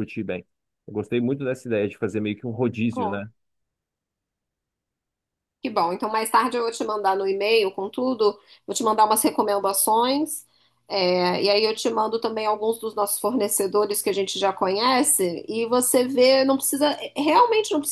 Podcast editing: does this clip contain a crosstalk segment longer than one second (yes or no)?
no